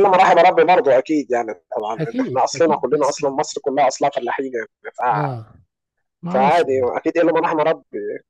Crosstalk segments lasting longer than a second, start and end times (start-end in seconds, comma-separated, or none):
2.0-3.2